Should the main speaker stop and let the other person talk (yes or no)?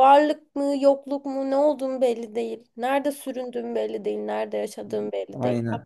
yes